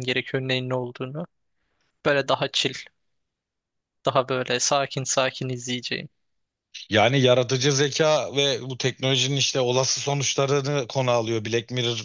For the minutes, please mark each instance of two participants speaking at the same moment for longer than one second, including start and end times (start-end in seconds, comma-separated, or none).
none